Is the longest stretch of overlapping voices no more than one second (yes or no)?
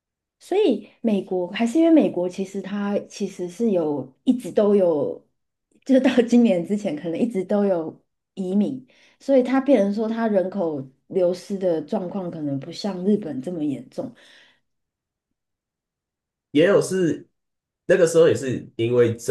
yes